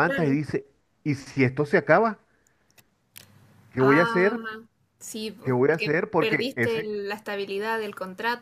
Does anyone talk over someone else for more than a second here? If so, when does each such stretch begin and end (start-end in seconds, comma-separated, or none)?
5.4-6.9